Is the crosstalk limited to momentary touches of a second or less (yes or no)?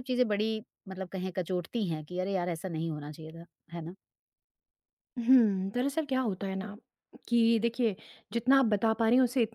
yes